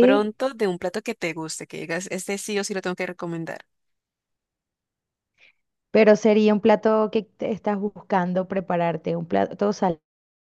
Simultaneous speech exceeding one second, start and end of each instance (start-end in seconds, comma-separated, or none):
none